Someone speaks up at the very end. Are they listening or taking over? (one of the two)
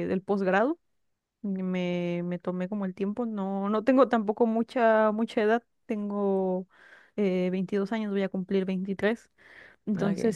listening